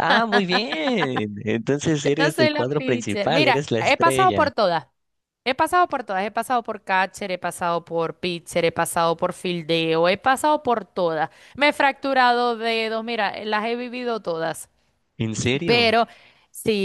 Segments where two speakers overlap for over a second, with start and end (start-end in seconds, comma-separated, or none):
2.0-4.5